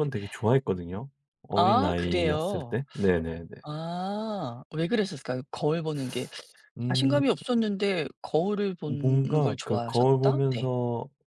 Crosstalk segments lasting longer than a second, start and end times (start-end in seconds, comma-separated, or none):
1.6-2.8, 8.9-10.7